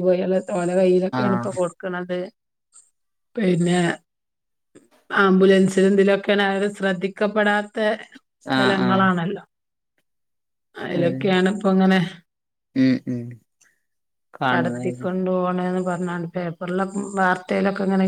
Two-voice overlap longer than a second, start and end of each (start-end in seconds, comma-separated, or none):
none